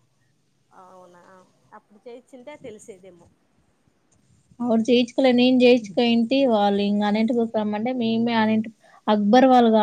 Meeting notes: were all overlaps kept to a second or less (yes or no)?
yes